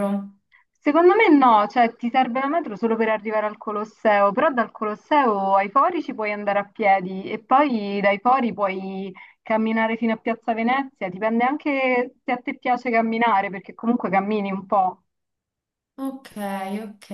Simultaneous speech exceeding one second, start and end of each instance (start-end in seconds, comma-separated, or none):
none